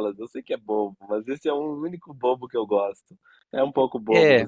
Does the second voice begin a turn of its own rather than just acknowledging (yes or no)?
yes